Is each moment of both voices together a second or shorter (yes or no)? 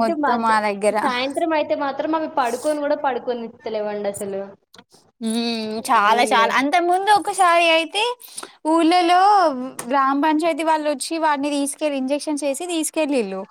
yes